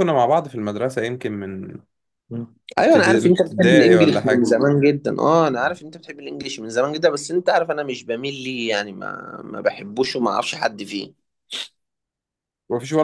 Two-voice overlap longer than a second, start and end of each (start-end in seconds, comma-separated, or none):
2.8-4.5